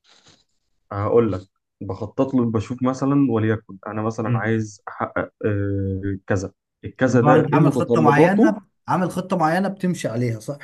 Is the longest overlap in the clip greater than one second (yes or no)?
yes